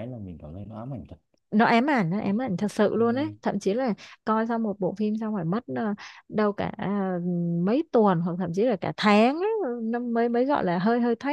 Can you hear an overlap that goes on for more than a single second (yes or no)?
no